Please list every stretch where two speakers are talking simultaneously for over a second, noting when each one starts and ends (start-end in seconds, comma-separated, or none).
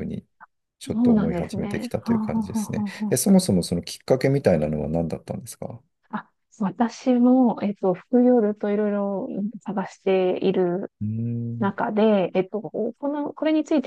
0.9-3.2